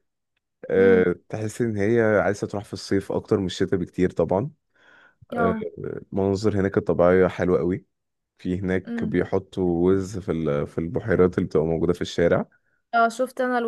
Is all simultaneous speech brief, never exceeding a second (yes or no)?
yes